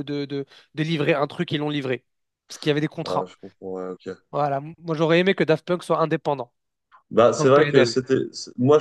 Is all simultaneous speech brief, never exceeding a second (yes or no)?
yes